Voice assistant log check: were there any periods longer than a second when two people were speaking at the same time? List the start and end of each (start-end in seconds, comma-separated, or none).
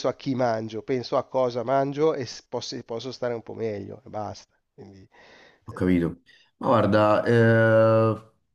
none